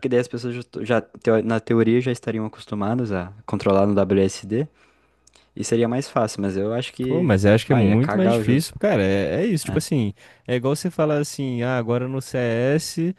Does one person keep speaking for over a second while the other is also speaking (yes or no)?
yes